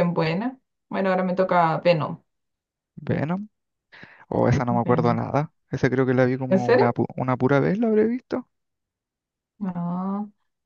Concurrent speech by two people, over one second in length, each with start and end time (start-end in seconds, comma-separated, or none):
none